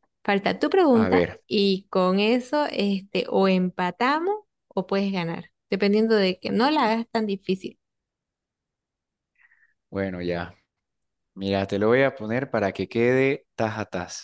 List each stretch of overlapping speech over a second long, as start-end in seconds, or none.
none